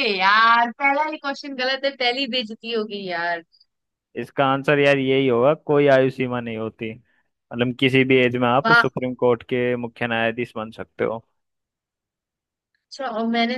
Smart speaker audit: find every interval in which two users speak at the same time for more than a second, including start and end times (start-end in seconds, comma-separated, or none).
none